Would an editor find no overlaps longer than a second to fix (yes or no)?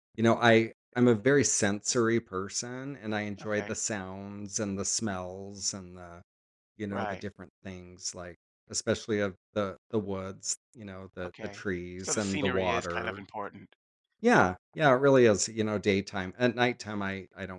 no